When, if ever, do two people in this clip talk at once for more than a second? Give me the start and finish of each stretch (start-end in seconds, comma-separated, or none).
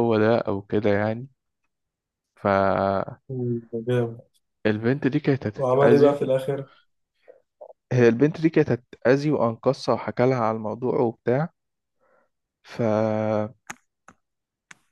none